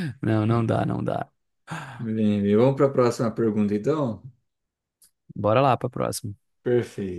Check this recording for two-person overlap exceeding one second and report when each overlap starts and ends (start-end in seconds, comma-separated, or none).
none